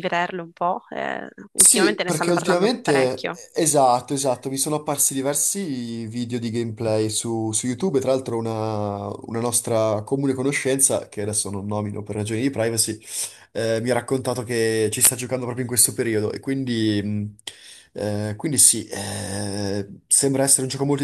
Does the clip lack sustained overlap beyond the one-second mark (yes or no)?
no